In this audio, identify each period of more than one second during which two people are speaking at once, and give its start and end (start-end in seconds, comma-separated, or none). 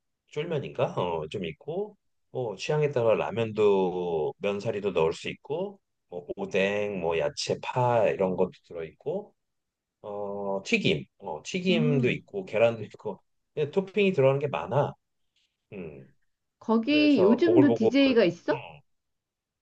16.8-18.6